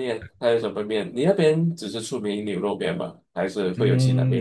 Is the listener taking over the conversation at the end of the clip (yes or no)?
yes